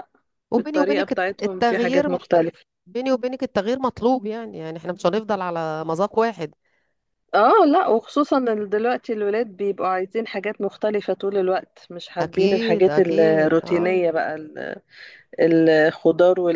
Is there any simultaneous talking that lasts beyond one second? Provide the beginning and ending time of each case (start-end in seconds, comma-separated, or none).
0.5-2.1, 12.2-14.0